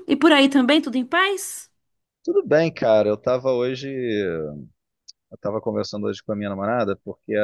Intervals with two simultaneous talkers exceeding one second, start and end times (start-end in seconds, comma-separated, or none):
none